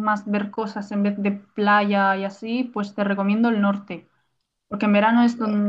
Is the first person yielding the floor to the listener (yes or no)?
no